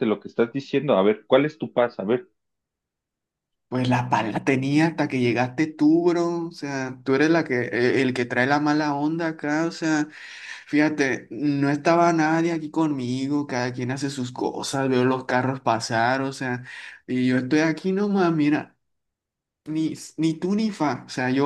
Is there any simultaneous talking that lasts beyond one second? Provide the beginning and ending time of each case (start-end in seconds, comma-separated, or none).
none